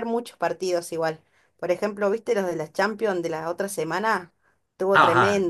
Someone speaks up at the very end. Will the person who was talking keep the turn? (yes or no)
no